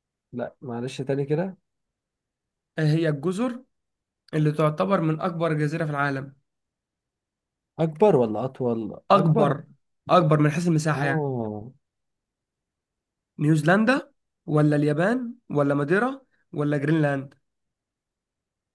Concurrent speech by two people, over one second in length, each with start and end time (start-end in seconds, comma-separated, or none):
none